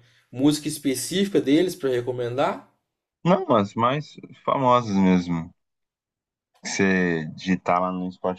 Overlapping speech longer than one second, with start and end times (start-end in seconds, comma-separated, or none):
none